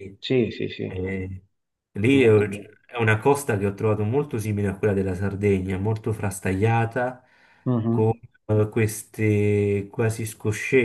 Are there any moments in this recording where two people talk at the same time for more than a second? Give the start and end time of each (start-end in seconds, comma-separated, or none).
none